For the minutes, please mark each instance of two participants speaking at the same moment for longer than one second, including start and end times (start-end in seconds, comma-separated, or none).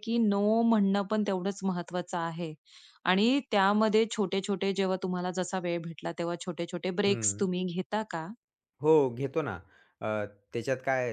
none